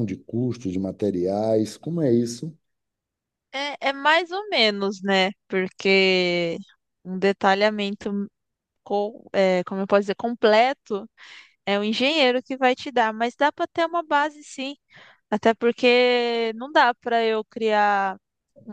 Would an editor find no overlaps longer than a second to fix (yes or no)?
yes